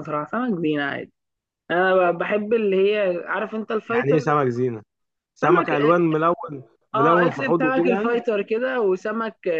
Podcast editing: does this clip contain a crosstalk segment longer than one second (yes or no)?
yes